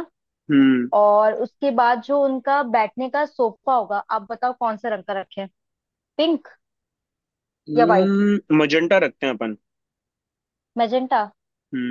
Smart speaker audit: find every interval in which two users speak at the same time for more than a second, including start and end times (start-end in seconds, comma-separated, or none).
none